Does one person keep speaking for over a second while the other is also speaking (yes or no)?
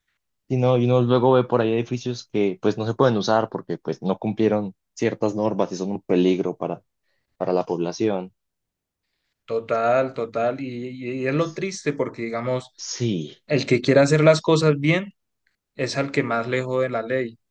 no